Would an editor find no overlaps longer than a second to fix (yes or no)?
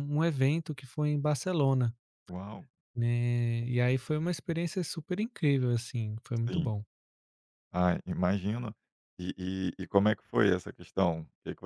yes